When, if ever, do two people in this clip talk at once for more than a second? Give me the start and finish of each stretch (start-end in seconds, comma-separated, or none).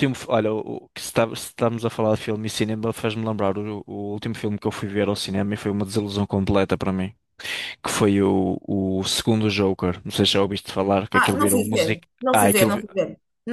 11.1-12.7